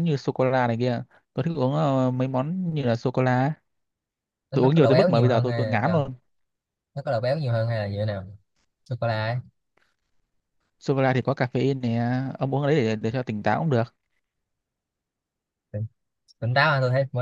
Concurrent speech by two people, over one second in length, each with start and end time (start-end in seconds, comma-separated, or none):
4.5-6.1